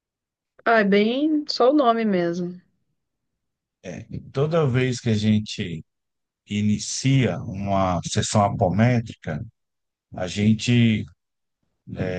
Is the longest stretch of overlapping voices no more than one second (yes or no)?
yes